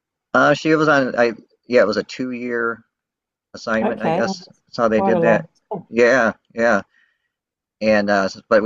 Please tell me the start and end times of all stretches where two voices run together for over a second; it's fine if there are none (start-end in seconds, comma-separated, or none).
3.8-5.5